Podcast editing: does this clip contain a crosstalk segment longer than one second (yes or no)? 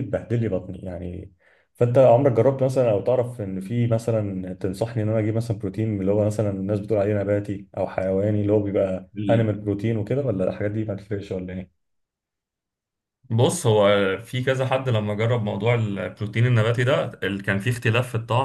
no